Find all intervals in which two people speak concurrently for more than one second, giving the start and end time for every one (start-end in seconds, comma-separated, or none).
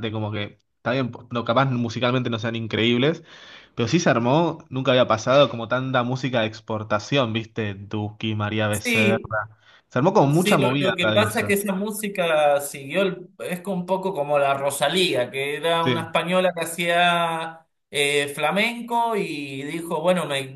10.3-11.6